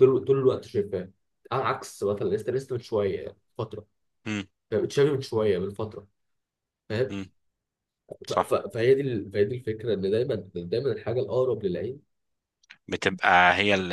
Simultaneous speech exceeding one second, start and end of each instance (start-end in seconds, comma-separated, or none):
none